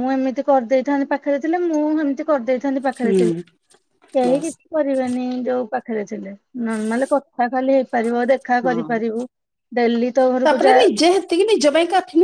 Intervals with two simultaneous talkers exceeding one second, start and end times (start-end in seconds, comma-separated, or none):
none